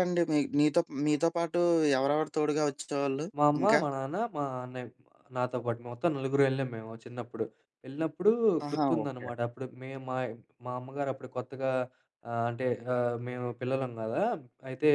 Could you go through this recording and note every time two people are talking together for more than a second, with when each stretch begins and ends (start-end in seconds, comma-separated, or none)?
none